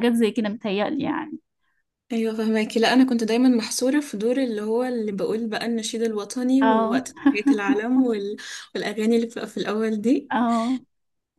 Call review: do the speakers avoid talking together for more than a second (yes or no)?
yes